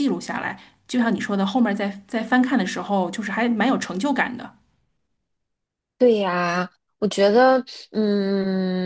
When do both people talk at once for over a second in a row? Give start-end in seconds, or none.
none